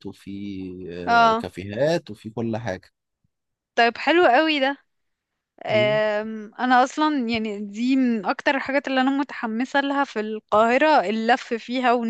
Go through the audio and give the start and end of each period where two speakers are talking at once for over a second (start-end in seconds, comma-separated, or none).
none